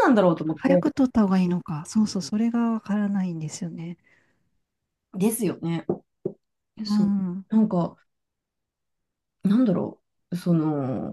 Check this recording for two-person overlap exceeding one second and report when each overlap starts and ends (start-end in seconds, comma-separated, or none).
none